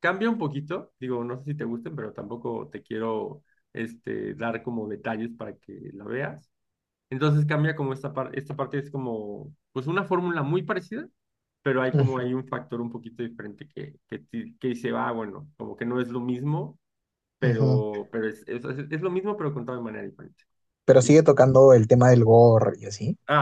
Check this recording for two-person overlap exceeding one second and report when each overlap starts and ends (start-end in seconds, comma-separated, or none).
none